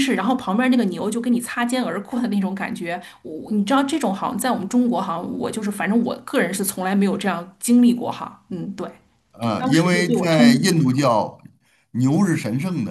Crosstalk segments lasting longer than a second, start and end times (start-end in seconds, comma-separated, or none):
9.4-10.8